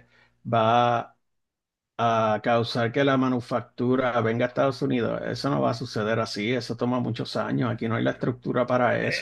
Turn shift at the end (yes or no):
yes